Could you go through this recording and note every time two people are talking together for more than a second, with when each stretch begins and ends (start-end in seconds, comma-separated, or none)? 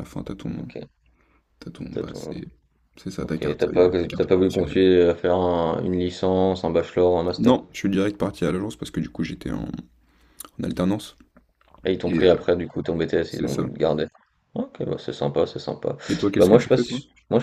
3.2-4.8